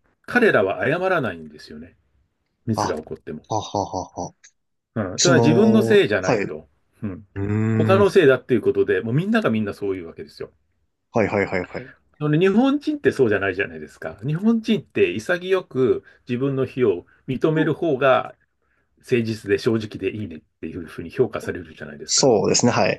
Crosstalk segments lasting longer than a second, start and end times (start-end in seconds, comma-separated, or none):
5.2-6.6